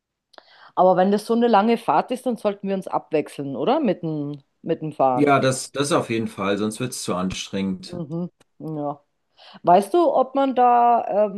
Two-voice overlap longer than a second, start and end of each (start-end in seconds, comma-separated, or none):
none